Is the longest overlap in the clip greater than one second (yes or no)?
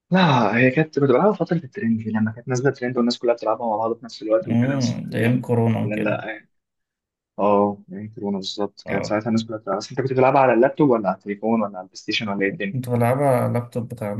yes